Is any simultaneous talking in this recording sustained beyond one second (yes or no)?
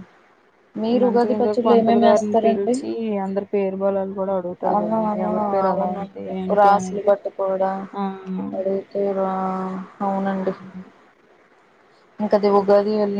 yes